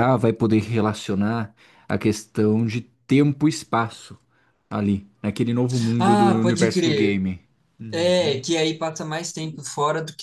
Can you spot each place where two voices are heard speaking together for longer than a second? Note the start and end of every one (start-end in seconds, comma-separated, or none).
6.0-7.2